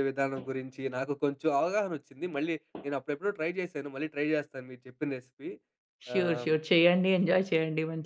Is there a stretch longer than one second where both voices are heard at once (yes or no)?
no